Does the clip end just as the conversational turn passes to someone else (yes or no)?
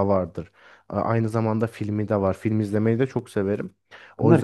no